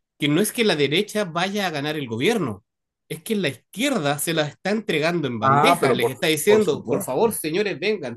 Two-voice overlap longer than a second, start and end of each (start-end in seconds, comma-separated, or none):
5.4-7.1